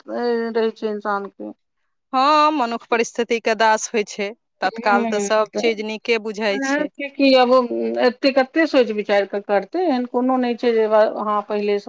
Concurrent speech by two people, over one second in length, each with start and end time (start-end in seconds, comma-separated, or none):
none